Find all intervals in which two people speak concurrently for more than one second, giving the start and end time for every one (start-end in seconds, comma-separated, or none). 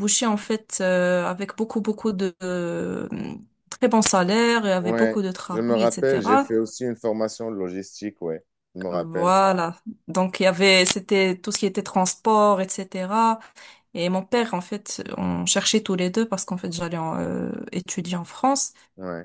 4.8-6.5